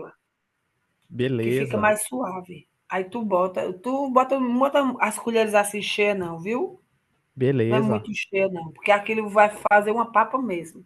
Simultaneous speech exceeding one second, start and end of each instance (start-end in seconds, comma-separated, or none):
none